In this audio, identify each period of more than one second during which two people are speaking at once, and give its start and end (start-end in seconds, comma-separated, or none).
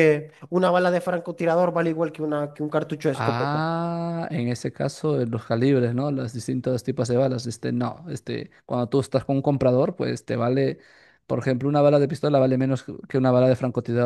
none